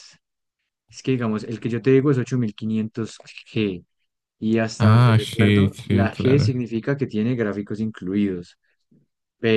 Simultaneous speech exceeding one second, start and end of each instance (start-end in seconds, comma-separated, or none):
4.8-6.5